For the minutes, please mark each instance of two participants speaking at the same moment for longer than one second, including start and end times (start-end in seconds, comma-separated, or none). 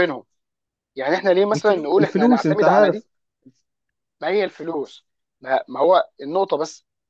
1.5-3.0